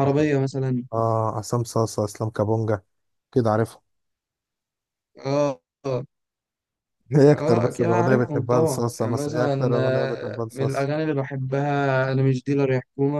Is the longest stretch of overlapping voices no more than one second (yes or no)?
no